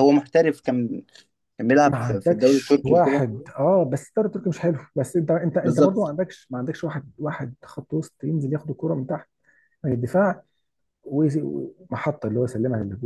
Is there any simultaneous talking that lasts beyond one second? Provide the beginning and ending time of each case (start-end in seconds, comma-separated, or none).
1.9-3.2